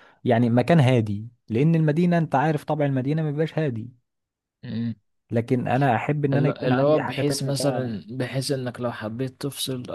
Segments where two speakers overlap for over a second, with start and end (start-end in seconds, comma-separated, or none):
6.3-7.9